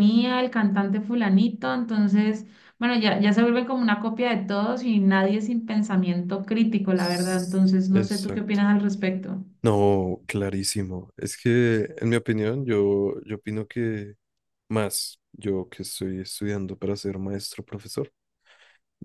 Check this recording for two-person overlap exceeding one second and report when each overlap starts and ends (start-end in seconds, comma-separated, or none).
6.9-8.7